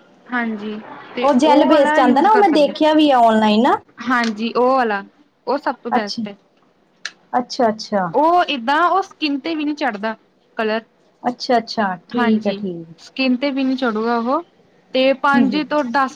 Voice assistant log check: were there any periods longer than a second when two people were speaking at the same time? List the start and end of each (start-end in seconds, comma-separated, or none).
1.2-3.1